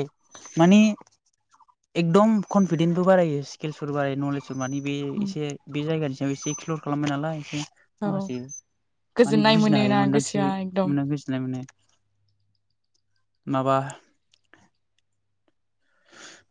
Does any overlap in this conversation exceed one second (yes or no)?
yes